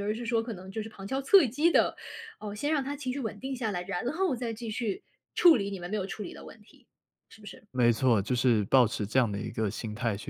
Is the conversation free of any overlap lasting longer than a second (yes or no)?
yes